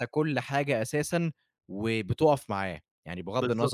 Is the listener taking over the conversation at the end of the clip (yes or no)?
yes